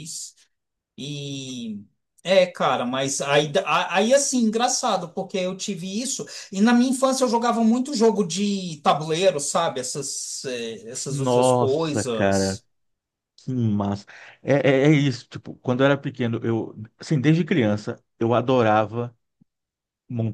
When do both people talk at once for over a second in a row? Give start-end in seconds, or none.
11.1-12.6